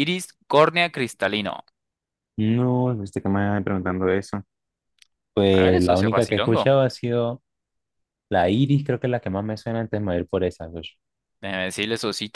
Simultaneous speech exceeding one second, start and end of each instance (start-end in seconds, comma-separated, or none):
5.5-6.8